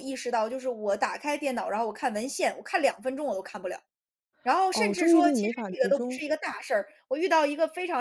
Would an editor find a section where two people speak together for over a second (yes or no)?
yes